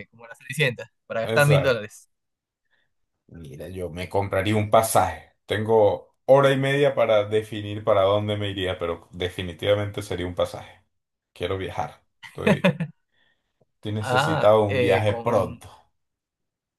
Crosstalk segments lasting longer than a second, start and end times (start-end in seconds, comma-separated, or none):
14.0-15.6